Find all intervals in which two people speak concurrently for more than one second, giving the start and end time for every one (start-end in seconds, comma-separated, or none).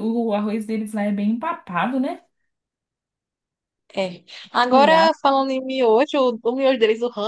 none